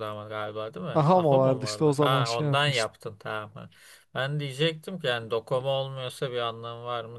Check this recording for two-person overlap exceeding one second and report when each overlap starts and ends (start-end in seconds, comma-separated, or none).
0.9-2.9